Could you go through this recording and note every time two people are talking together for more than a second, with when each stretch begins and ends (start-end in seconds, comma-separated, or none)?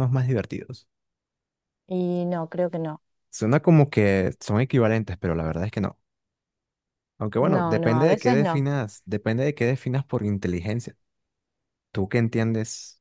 7.4-8.7